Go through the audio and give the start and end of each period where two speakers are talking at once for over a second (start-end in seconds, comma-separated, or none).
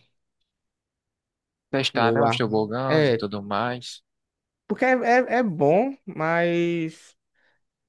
1.9-3.2